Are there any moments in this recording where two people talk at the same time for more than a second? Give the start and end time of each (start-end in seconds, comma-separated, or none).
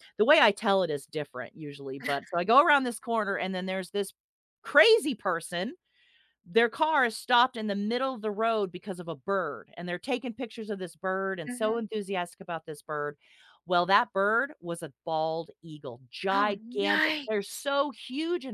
16.3-17.6